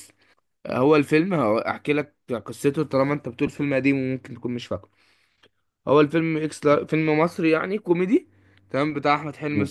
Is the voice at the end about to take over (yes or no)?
no